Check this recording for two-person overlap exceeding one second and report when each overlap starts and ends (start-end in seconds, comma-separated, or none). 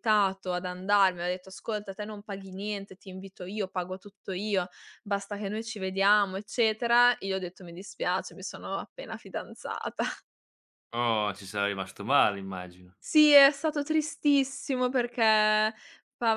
none